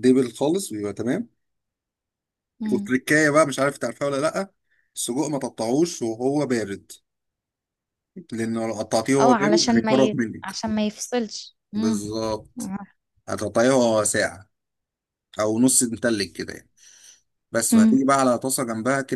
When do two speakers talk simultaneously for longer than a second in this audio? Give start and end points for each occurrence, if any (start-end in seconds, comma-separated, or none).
9.2-10.6